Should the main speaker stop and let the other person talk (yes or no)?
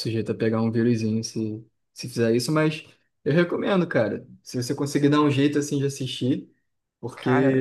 no